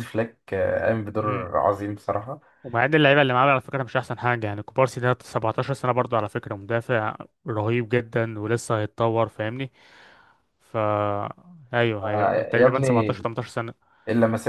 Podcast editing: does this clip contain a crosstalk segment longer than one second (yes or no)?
yes